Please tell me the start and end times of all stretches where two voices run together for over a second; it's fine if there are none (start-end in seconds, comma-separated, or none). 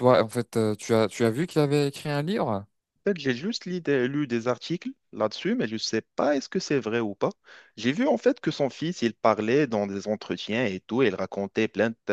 none